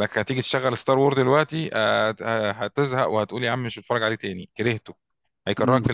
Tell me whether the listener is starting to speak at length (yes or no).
yes